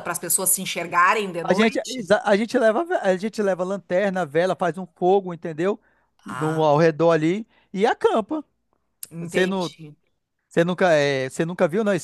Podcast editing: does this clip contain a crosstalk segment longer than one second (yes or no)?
no